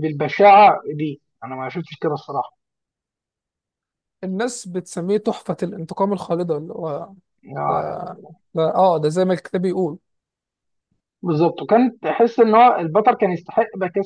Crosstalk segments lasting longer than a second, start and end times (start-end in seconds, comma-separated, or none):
none